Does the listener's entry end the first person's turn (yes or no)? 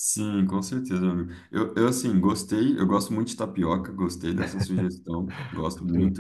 no